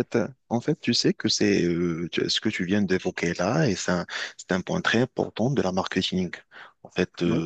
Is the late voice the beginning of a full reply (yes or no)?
no